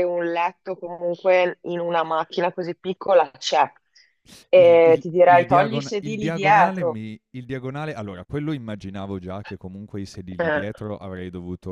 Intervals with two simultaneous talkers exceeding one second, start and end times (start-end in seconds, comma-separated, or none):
4.5-7.0